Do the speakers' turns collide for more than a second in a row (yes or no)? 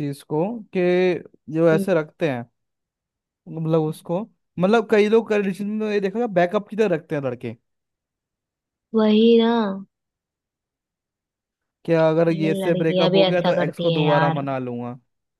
yes